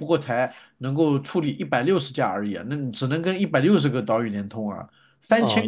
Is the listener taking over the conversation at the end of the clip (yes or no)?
yes